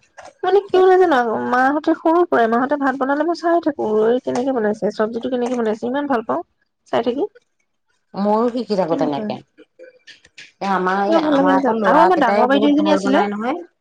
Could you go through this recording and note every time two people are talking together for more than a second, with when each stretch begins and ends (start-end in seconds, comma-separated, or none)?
11.0-13.2